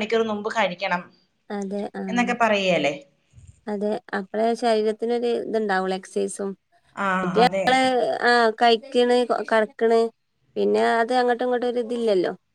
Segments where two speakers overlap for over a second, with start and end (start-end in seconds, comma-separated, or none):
none